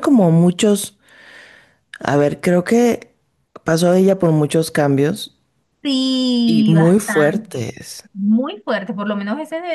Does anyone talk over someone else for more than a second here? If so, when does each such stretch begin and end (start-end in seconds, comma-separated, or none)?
6.5-7.7